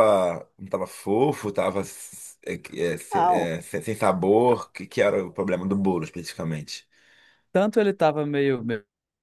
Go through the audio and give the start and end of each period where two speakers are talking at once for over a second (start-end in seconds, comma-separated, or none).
none